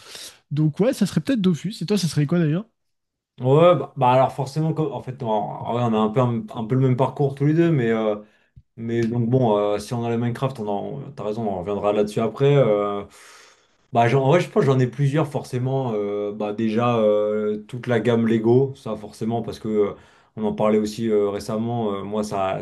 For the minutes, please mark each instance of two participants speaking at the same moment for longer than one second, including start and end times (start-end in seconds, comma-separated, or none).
none